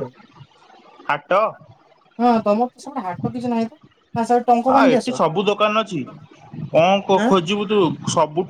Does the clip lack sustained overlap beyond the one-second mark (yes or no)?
yes